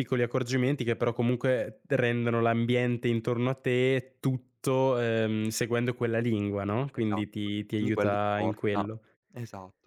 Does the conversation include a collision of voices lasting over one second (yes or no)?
yes